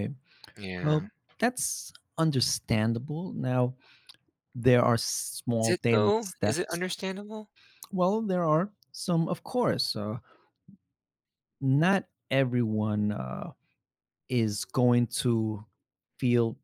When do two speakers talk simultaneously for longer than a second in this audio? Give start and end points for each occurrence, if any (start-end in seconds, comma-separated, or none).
5.6-6.8